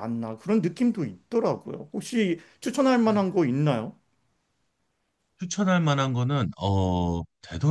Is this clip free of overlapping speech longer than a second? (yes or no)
yes